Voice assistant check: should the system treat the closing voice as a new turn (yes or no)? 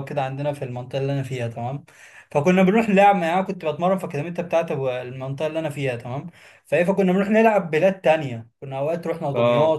no